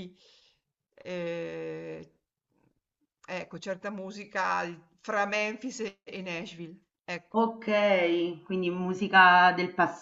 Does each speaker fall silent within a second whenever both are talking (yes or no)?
yes